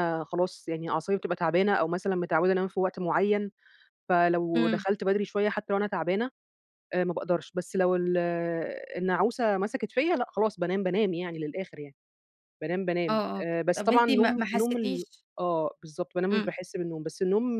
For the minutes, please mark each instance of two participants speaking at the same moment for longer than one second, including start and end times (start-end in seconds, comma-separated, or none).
13.1-15.2